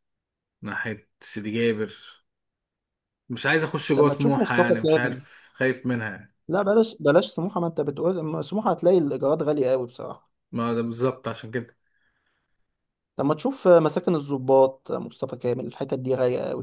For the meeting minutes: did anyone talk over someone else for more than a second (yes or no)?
yes